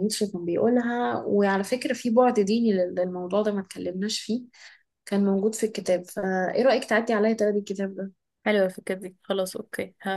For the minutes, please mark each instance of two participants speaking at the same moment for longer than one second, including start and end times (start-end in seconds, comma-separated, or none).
none